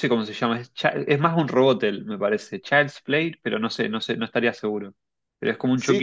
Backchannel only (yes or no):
no